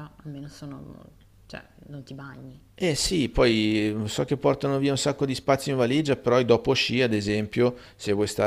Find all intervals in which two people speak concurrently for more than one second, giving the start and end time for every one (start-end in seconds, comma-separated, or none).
none